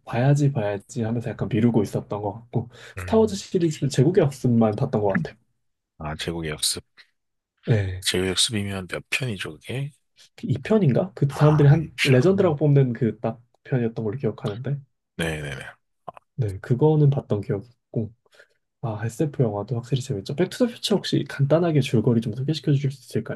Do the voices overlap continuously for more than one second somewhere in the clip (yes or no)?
yes